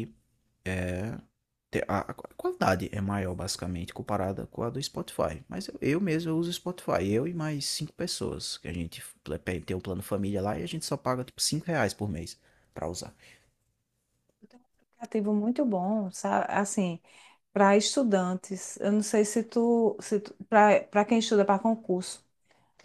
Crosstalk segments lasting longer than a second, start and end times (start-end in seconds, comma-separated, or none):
none